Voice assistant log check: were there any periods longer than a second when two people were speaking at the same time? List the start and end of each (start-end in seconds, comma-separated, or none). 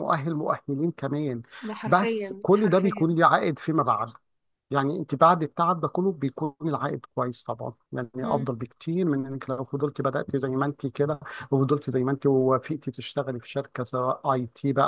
1.9-3.1